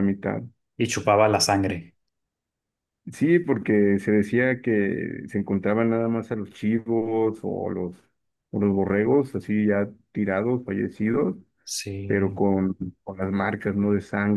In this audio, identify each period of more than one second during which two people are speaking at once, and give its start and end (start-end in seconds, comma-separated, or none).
none